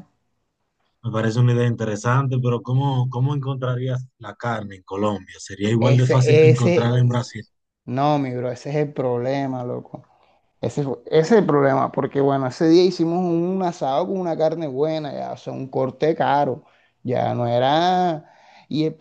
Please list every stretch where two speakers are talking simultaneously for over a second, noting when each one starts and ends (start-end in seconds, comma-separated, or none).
5.8-7.3